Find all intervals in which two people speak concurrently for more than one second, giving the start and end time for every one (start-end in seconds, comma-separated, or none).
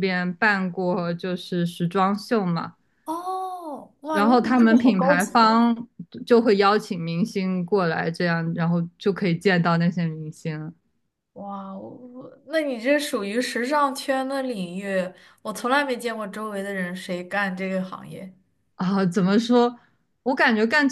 4.1-5.5